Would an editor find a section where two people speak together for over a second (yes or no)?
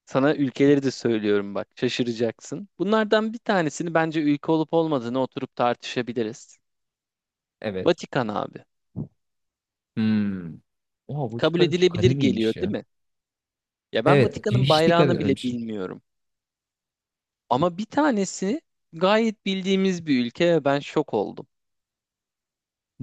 yes